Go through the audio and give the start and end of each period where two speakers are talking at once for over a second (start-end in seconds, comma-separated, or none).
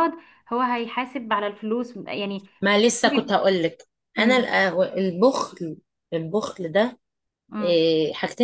none